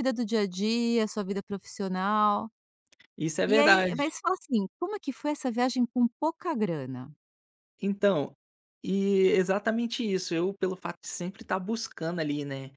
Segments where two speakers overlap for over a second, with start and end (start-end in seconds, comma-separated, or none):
none